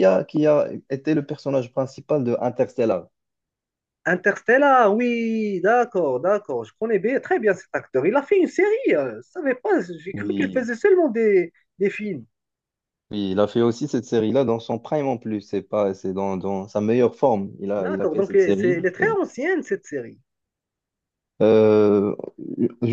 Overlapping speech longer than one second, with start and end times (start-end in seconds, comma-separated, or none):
17.8-19.1